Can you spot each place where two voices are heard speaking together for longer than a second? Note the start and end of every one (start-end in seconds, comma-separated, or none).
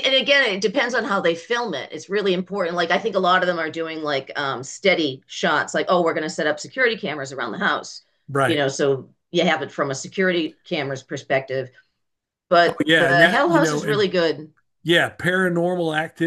12.7-14.1